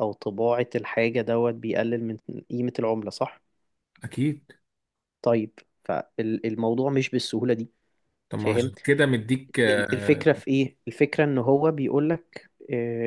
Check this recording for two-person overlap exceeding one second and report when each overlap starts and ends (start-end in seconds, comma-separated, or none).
none